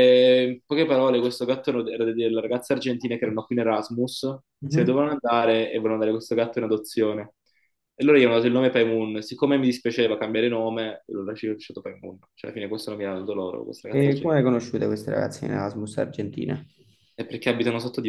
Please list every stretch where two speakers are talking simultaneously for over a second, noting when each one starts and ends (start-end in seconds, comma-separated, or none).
none